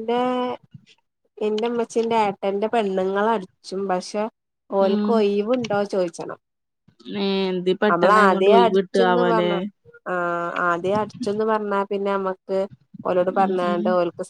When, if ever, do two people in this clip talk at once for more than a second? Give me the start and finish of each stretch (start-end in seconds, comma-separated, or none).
7.9-9.5